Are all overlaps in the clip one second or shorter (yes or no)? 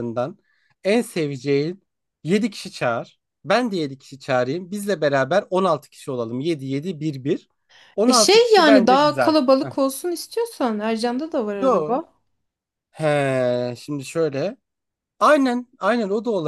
no